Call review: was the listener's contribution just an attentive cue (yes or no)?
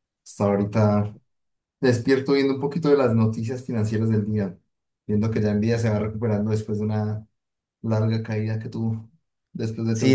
no